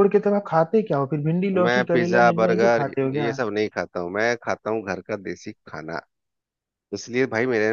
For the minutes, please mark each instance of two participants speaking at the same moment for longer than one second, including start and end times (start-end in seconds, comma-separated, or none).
1.5-3.4